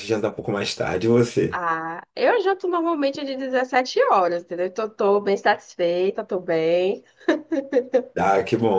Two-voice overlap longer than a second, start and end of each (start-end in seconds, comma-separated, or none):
none